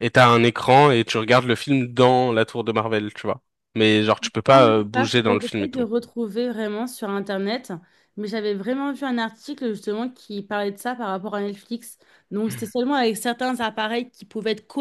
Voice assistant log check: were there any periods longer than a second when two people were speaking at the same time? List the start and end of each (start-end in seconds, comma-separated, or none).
4.5-5.8